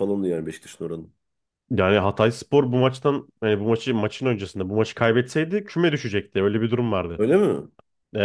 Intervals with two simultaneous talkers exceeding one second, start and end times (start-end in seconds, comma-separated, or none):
none